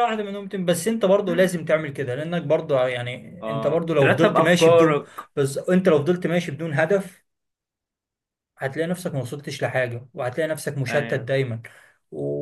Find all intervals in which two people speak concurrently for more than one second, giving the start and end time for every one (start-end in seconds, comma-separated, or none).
3.4-5.2